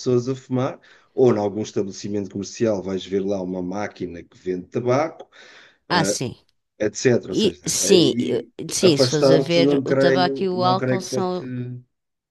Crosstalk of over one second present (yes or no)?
yes